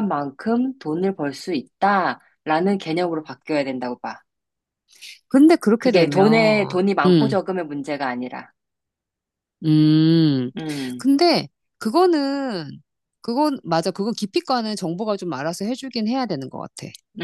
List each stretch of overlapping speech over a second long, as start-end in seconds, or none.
5.8-7.3